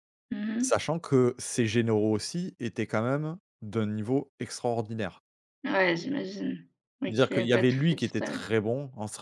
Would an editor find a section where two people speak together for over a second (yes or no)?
yes